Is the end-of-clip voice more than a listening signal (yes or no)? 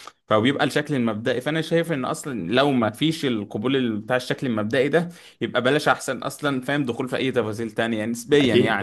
no